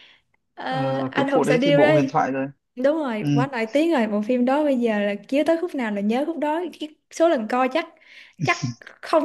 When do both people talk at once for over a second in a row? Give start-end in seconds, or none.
0.7-2.1